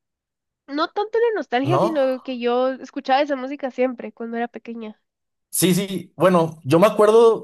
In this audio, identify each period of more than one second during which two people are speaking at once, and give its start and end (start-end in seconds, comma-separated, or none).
none